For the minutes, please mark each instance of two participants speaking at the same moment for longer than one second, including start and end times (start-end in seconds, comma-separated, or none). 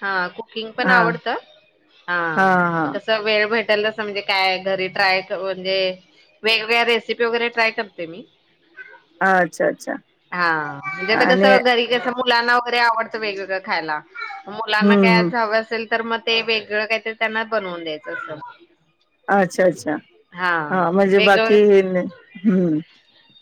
none